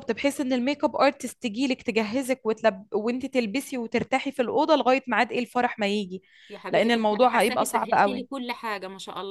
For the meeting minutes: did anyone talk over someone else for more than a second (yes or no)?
yes